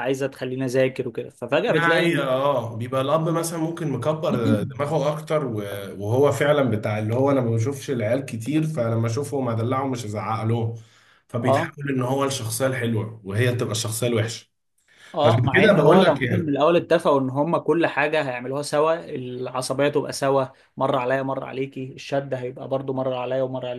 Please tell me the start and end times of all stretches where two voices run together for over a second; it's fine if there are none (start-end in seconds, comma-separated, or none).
15.2-16.5